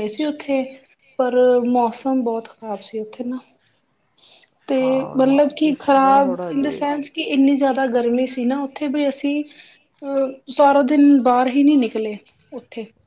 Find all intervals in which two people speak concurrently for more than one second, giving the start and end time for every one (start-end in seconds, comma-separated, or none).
5.2-6.8